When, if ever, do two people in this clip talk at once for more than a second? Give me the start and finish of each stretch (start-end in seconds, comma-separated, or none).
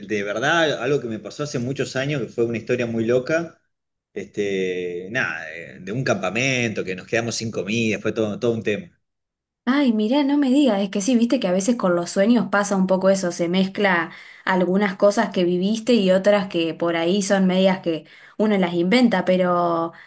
none